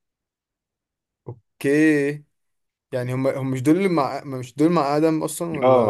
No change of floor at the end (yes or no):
no